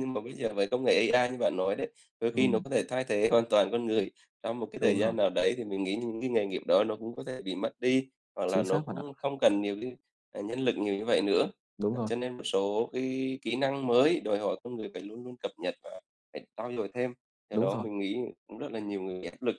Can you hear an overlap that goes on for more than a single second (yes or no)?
no